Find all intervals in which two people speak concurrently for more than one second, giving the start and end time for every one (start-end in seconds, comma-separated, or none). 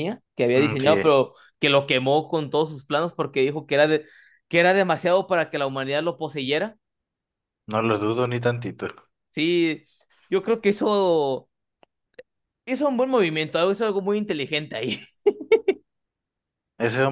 none